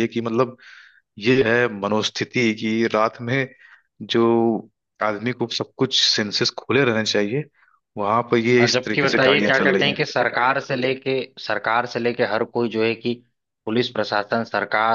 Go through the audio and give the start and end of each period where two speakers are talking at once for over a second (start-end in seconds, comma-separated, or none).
8.6-10.0